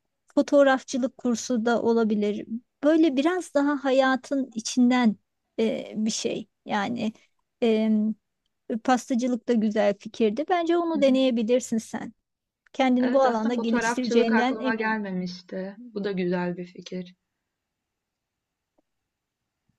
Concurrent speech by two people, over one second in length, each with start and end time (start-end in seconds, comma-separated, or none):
13.0-15.0